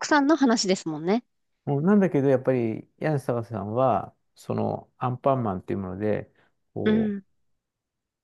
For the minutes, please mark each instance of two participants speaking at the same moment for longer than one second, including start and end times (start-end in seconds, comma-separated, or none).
none